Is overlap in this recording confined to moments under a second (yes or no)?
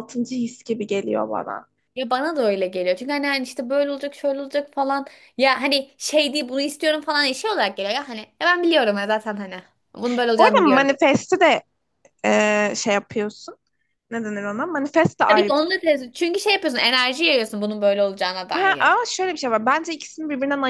yes